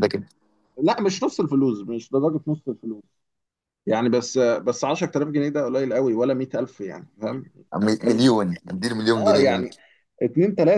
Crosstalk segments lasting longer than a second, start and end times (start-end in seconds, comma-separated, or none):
none